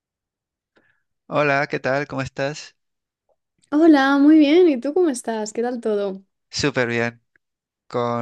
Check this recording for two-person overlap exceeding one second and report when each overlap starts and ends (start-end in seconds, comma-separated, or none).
none